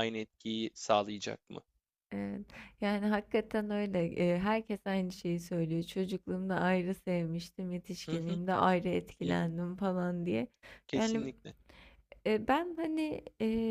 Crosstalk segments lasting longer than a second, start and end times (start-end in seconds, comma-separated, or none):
none